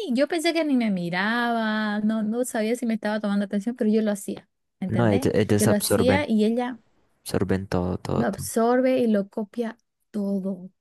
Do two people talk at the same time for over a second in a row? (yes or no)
yes